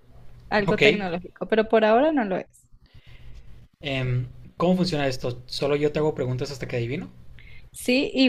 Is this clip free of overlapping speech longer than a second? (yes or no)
yes